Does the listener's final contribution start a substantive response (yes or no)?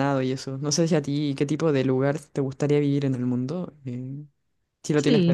yes